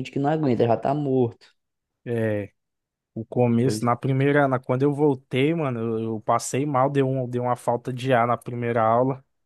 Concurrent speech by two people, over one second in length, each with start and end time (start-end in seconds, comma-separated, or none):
none